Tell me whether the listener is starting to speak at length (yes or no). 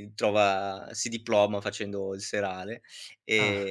no